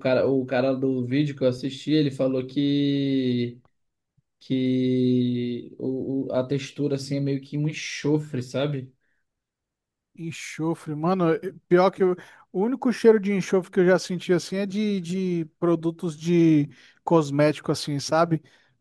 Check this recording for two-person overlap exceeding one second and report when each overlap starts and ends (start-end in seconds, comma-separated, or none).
none